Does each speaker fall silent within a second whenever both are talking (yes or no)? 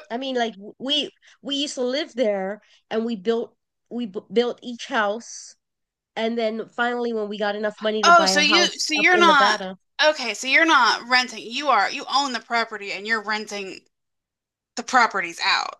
no